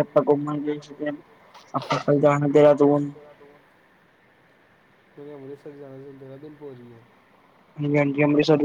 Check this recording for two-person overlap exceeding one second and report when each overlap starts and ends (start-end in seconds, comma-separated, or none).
none